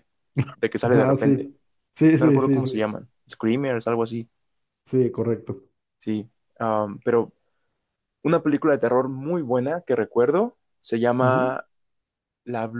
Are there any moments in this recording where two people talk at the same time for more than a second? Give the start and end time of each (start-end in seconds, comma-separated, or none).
none